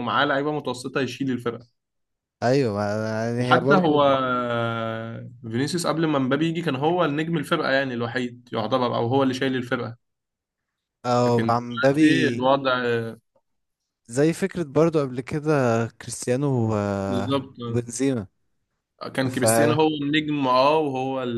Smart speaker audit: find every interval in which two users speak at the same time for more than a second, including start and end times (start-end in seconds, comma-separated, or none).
11.3-12.5